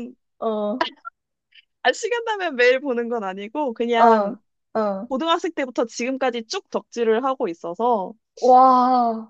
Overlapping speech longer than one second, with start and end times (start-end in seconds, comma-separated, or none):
none